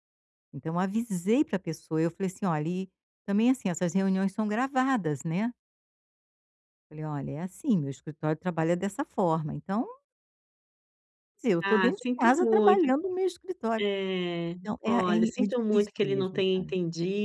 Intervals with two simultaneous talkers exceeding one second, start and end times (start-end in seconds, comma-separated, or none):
11.6-12.9, 14.6-16.7